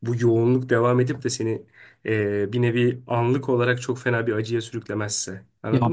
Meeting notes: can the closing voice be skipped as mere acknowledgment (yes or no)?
no